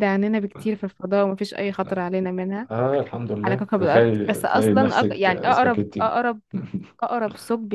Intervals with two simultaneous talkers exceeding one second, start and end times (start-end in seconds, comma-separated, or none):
3.4-6.2